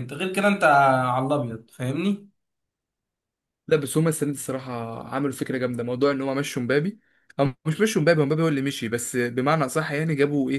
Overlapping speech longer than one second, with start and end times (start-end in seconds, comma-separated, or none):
none